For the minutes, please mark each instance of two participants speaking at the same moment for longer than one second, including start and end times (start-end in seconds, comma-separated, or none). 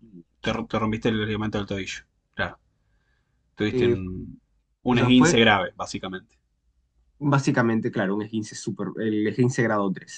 none